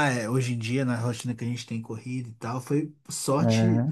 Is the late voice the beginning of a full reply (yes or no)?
no